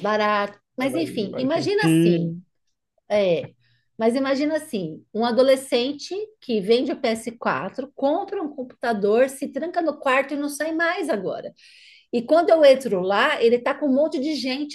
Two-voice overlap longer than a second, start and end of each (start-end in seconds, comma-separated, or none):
0.8-2.4